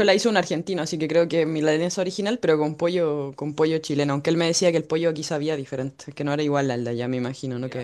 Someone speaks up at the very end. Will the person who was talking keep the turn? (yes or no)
no